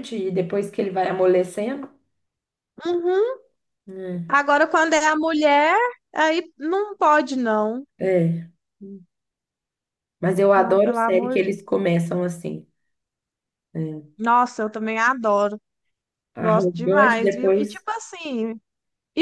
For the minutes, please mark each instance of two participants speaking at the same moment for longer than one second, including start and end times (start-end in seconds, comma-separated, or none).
10.5-11.8, 16.4-17.9